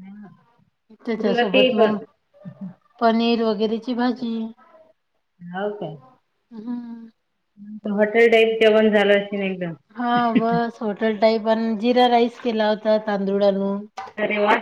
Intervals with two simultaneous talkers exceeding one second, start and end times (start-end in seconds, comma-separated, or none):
none